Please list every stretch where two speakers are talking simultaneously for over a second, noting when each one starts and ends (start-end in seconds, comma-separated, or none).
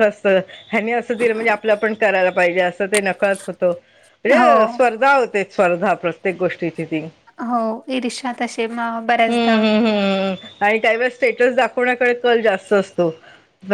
none